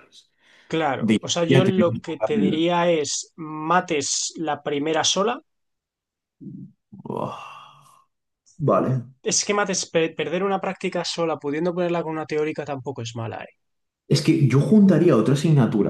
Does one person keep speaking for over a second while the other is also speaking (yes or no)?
yes